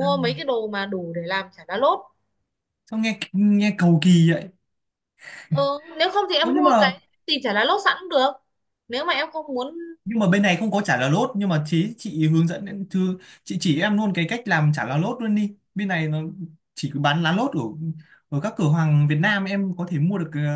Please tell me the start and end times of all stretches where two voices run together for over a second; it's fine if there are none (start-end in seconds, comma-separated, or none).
none